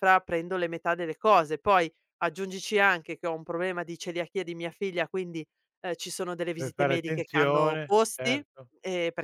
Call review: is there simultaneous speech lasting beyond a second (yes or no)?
yes